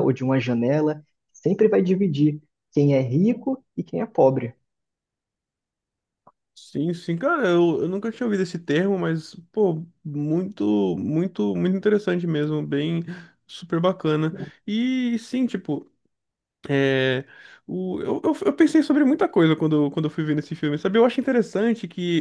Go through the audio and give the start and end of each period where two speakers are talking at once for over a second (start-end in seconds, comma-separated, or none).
none